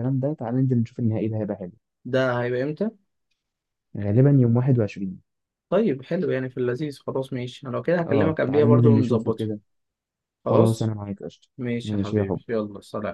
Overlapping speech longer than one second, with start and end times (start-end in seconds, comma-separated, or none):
8.1-9.4